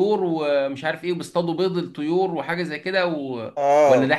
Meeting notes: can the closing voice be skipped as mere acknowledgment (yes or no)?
no